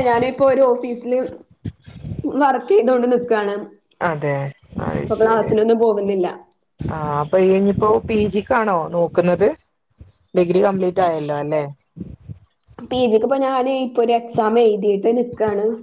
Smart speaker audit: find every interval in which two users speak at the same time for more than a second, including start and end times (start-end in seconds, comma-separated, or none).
none